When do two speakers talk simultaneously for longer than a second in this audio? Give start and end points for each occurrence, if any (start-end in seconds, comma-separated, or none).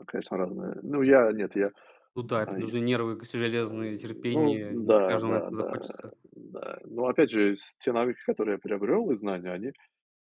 4.3-5.9